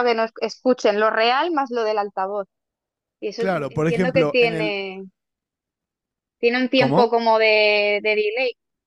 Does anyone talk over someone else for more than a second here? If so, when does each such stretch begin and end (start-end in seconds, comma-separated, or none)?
3.4-4.7